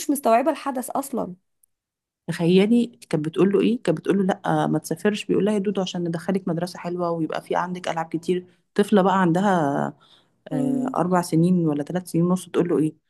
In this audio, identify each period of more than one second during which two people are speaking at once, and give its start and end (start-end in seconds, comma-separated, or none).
none